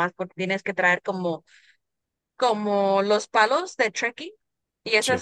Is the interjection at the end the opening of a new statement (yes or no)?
no